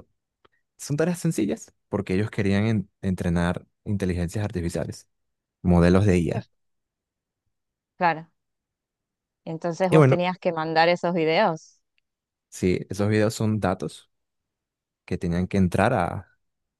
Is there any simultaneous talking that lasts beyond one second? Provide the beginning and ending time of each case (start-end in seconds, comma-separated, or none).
none